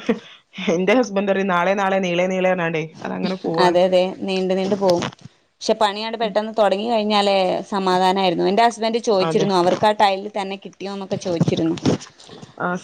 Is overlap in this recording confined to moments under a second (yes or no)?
yes